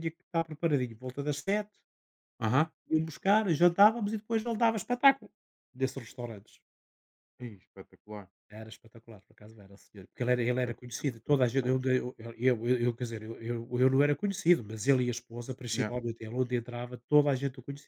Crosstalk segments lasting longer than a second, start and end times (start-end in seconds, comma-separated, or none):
10.7-11.9